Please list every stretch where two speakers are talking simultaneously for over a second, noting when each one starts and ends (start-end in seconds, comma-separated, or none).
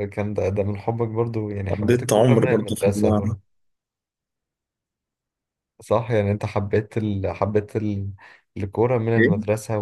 1.7-3.4